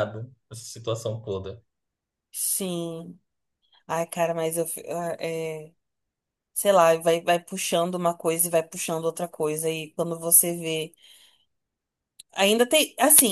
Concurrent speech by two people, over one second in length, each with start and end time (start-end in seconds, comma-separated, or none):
none